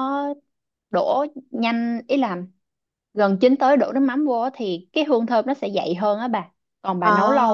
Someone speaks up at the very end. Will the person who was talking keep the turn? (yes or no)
yes